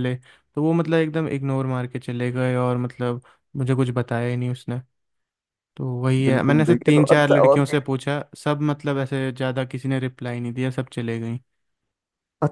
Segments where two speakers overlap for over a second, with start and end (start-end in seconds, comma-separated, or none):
6.3-7.8